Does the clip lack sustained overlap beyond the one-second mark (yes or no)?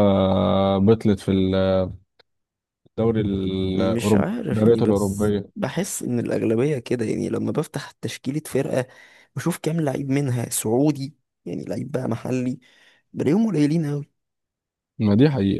no